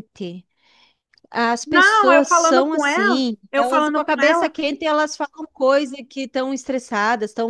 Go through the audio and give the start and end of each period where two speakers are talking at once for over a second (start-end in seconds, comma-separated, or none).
1.6-4.5